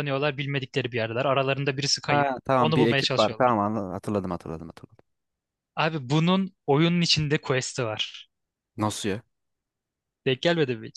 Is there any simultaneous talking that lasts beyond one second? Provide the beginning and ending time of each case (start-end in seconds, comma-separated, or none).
2.1-3.5